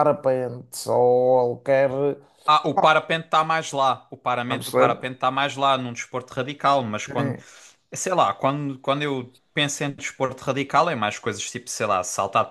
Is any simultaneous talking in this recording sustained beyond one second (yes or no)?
no